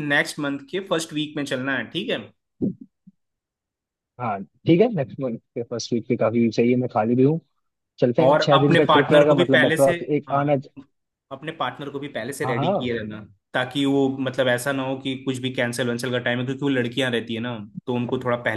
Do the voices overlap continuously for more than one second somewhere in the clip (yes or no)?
yes